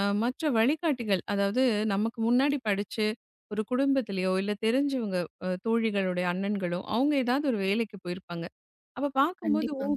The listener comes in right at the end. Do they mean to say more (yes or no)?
no